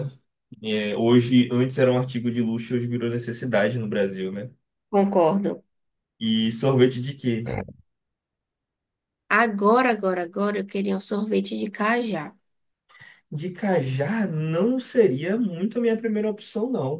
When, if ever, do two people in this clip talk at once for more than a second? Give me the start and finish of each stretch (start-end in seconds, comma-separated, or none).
none